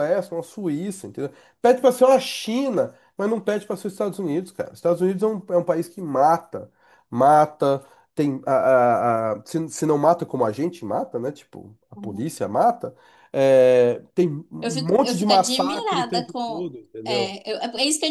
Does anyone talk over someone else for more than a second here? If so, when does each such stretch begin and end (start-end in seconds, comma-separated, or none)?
14.6-17.3